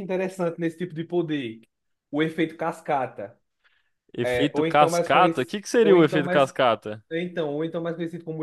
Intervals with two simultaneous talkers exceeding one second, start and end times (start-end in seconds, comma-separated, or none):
4.2-6.5